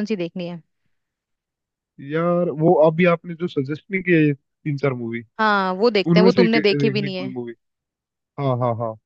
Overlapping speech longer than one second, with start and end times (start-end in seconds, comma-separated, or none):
6.1-7.4